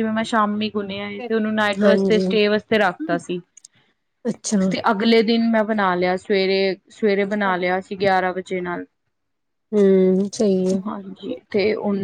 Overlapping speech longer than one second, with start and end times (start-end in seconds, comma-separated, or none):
none